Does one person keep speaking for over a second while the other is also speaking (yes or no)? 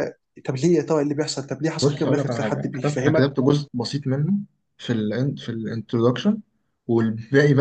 yes